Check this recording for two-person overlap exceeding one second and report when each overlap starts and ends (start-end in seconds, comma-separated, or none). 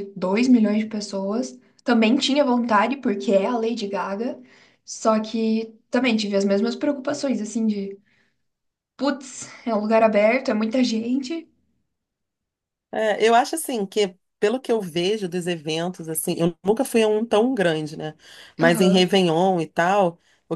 none